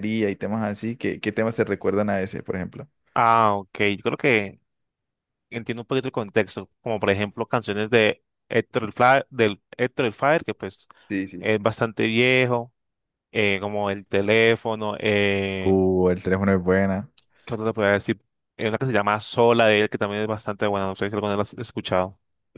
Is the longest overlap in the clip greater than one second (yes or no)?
no